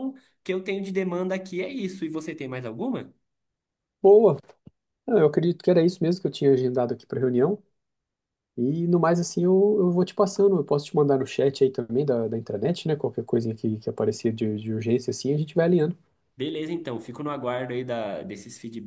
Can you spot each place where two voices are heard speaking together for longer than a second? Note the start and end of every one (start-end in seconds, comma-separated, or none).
none